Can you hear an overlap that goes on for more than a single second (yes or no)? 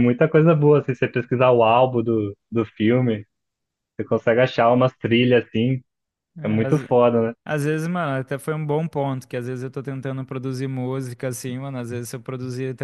no